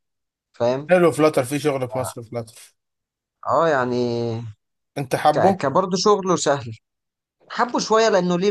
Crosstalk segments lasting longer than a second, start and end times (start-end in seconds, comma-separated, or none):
none